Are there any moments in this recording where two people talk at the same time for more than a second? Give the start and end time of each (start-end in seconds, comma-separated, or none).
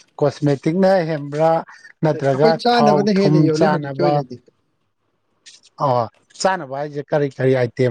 2.1-4.1